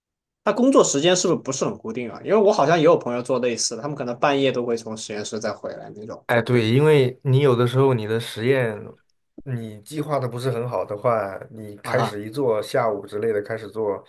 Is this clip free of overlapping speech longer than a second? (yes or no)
yes